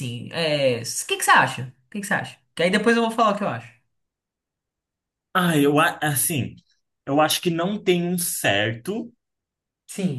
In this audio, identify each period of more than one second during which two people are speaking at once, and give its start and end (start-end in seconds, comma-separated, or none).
none